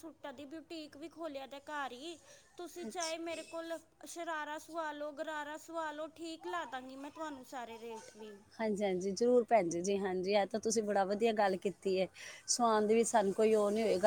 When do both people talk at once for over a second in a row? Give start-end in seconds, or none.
none